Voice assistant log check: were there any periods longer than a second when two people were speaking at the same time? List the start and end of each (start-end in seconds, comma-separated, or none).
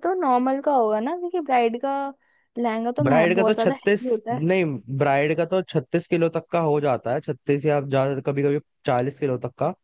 3.0-4.5